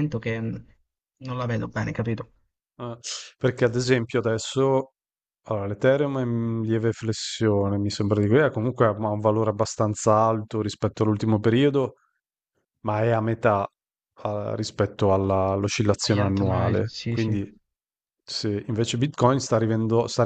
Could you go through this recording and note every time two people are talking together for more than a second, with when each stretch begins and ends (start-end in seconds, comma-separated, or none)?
16.0-17.4